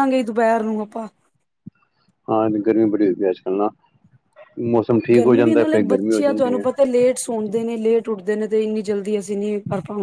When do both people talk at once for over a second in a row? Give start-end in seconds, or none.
none